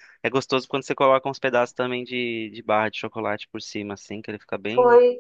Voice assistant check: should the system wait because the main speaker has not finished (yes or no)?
no